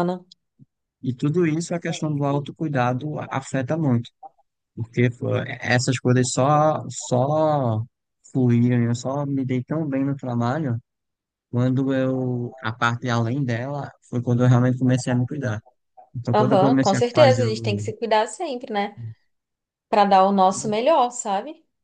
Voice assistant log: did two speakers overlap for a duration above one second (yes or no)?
yes